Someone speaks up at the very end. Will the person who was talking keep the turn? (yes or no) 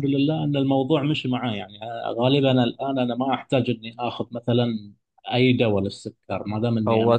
yes